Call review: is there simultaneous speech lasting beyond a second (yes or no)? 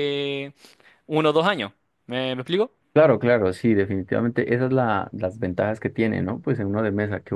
no